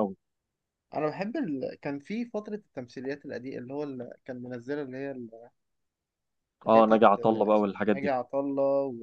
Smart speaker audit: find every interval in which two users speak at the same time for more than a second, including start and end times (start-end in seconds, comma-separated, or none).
6.7-8.2